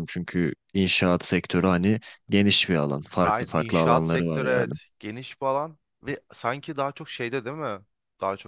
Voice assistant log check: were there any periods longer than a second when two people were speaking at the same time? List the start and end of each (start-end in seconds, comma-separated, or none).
3.2-4.7